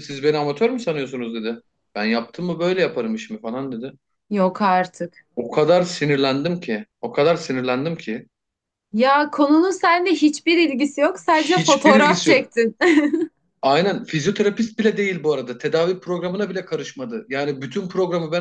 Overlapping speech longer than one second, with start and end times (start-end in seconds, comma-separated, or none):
11.3-12.5